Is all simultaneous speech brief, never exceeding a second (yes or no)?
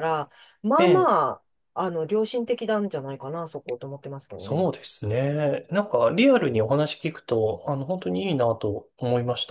yes